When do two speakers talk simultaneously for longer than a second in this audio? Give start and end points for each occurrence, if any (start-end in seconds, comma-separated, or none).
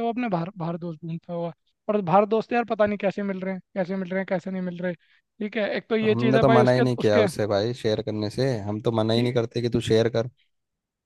6.0-7.2